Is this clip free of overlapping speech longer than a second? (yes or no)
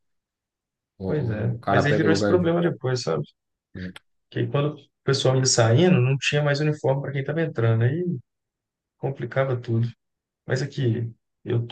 no